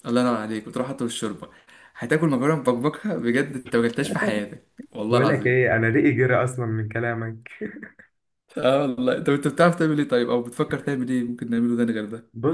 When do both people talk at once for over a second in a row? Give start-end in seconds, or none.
none